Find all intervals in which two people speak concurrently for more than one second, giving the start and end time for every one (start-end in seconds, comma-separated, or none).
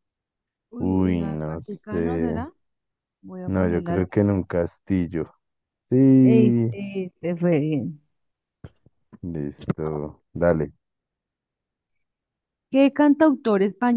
0.8-2.4